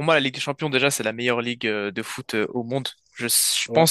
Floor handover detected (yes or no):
no